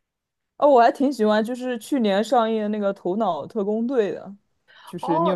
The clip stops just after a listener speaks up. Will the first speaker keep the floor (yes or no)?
no